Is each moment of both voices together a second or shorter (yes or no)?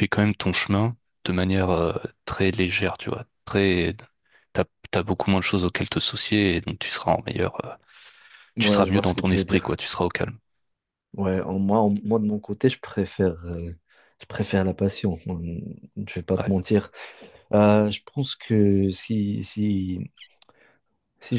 no